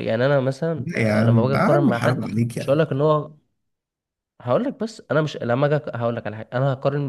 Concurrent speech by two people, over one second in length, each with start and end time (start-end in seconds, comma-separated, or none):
0.8-2.8